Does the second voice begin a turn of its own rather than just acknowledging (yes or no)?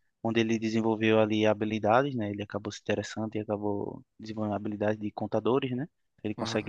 no